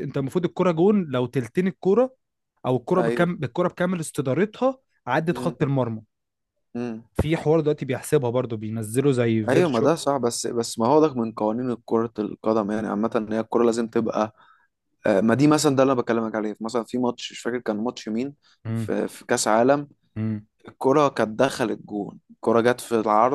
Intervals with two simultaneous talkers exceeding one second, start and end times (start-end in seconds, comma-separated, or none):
none